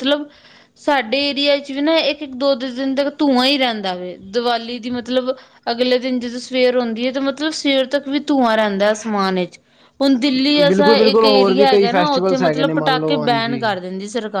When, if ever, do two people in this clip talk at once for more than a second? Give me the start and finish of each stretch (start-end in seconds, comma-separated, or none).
10.7-13.6